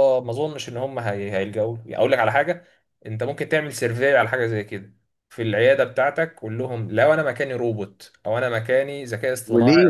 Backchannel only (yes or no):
no